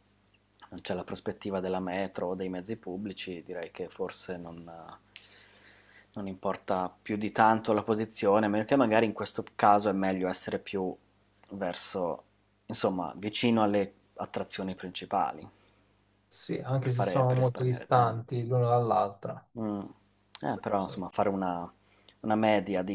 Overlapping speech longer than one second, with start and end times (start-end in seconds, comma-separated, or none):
16.8-18.2